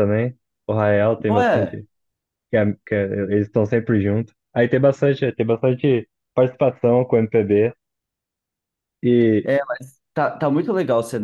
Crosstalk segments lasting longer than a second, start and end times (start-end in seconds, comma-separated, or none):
none